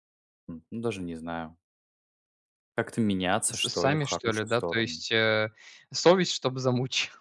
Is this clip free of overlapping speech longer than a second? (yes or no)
no